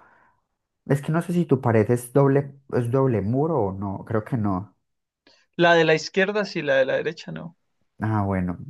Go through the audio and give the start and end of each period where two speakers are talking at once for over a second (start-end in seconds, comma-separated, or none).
none